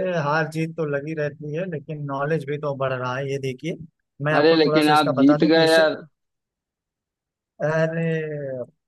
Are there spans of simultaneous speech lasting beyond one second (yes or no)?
yes